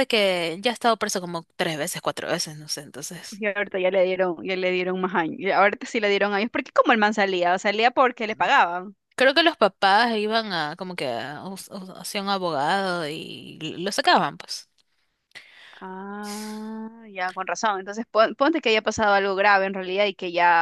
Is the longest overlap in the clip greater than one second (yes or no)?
no